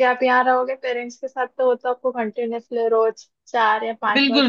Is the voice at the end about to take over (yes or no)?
yes